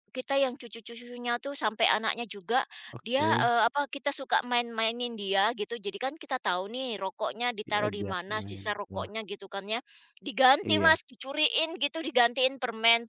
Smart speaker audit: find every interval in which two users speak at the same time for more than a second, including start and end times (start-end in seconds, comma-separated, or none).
7.6-9.1